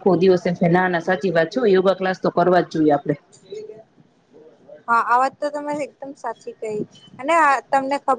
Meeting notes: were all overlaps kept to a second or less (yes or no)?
yes